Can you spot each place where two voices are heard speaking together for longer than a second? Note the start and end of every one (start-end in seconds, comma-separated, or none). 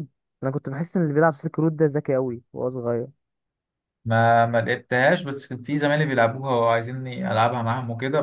none